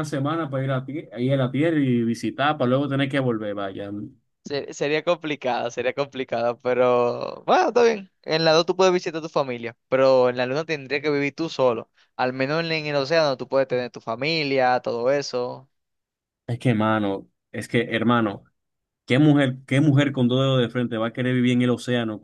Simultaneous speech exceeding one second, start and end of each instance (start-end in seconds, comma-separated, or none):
none